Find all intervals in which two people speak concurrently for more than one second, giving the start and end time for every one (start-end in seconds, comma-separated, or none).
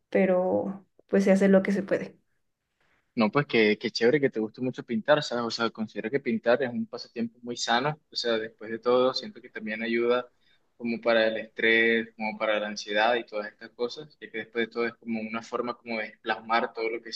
none